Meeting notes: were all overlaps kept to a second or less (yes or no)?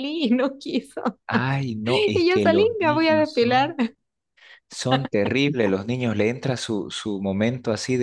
no